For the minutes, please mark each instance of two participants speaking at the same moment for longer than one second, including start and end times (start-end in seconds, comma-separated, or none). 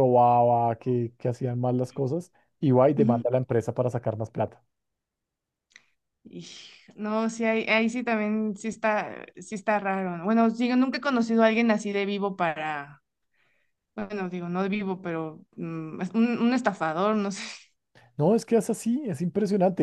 none